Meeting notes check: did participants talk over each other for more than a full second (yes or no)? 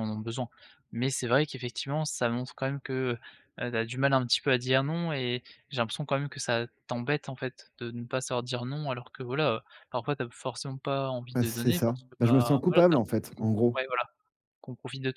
yes